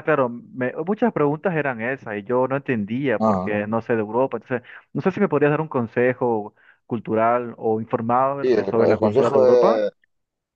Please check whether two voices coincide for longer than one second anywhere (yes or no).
yes